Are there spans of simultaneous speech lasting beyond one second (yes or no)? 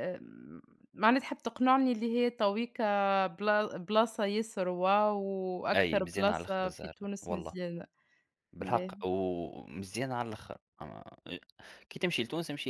yes